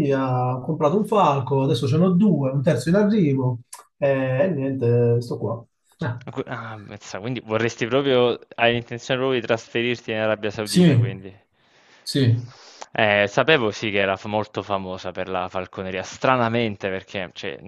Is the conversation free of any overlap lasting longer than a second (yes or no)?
yes